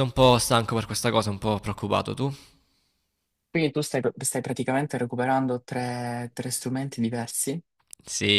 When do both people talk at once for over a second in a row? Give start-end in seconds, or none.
none